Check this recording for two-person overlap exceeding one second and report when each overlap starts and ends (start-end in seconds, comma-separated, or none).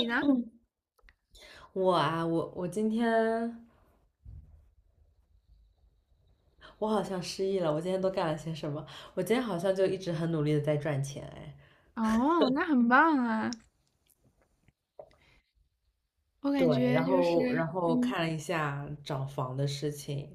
16.6-18.1